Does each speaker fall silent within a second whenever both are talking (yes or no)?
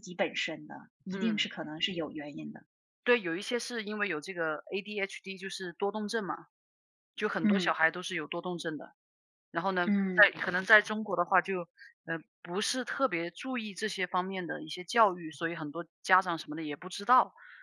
yes